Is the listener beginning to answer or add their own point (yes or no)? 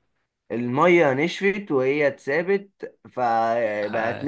no